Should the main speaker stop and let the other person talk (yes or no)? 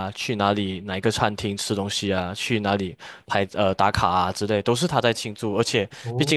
no